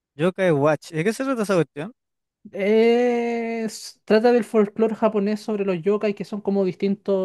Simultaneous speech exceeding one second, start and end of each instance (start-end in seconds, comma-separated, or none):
none